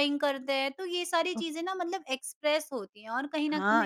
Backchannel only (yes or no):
no